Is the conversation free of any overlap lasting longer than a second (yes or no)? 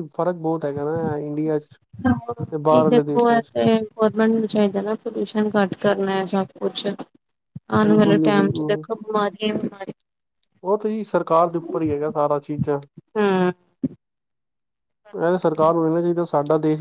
yes